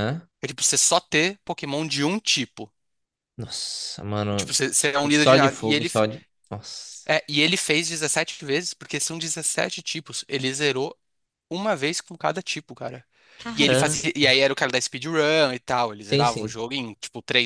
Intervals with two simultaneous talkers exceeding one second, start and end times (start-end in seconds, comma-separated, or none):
4.3-6.0